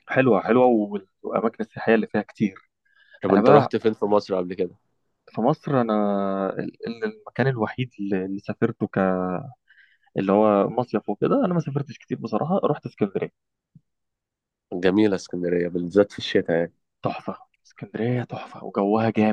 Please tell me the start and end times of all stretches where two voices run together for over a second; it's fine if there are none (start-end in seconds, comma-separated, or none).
none